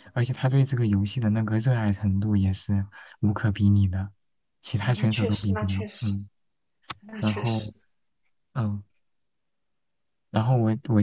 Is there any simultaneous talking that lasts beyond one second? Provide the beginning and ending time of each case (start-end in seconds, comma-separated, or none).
4.8-6.1